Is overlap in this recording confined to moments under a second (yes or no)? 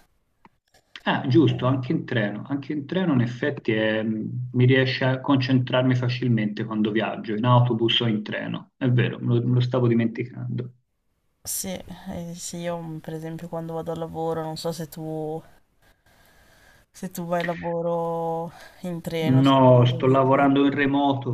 no